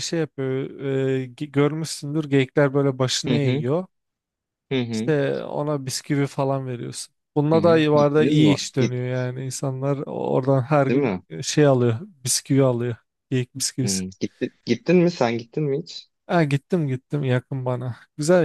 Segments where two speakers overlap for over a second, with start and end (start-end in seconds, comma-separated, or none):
7.5-9.0